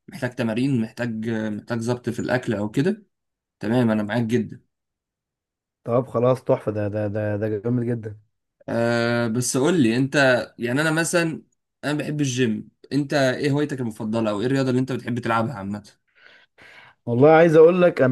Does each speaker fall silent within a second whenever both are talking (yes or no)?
yes